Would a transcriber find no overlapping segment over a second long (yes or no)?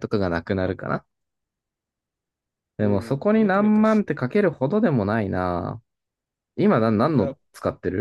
no